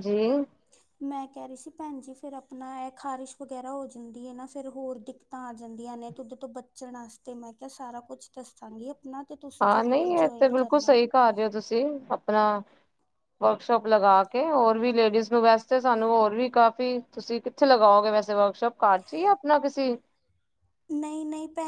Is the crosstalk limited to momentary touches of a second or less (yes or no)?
no